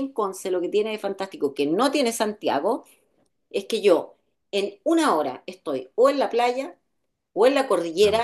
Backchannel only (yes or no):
yes